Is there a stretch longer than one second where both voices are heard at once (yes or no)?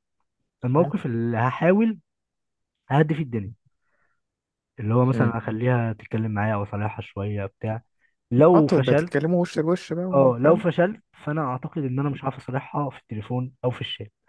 no